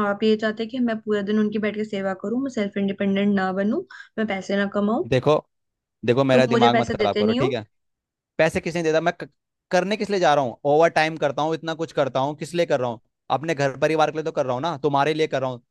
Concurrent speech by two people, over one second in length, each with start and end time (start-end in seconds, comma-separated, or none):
6.3-7.6